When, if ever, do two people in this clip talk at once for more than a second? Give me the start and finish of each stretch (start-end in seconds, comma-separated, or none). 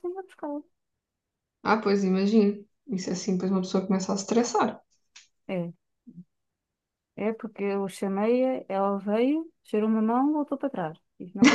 none